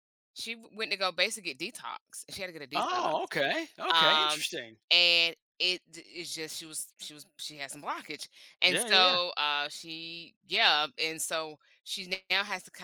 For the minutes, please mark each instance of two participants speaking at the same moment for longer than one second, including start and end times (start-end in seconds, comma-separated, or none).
none